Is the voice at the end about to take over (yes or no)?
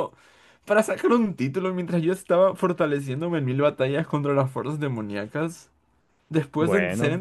no